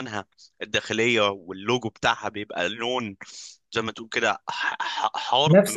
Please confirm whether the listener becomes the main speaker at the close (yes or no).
yes